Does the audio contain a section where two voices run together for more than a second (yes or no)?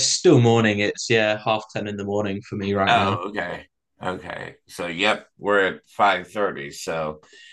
no